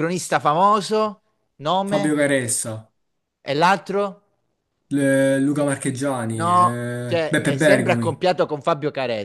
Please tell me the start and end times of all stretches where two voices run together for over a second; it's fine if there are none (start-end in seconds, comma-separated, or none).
6.3-8.2